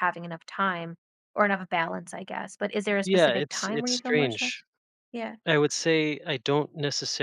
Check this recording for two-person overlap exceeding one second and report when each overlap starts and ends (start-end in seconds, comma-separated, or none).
3.0-4.6